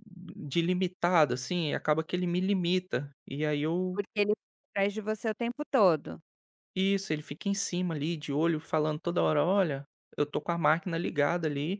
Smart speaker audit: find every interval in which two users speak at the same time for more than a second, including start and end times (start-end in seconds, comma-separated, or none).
none